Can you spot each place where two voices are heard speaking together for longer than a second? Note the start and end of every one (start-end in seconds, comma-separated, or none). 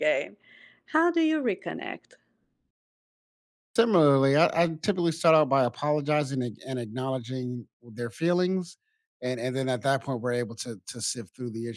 none